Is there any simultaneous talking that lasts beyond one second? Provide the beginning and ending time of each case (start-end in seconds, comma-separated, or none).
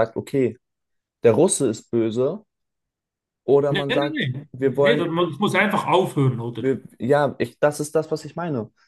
3.7-5.2